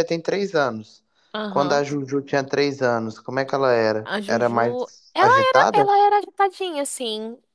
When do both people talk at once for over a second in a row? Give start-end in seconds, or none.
4.0-5.9